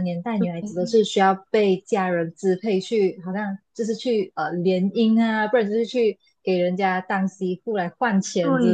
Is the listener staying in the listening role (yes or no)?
yes